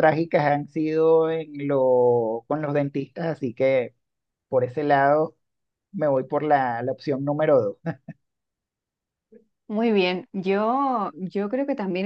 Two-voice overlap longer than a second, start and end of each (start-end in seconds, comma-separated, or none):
none